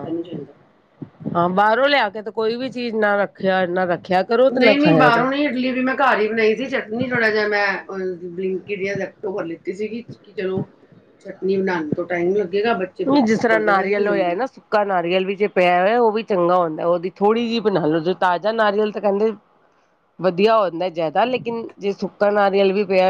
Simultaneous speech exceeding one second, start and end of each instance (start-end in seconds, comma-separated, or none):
none